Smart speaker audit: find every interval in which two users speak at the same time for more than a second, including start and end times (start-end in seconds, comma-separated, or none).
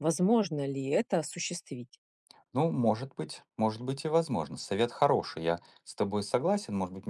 none